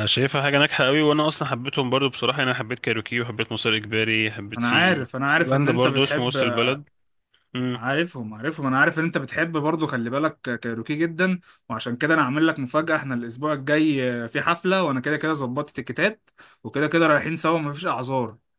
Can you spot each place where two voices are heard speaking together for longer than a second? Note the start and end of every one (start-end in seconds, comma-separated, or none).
4.5-6.4